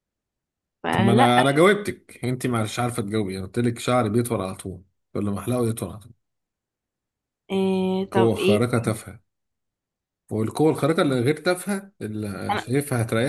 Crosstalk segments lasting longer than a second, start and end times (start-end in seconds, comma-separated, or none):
none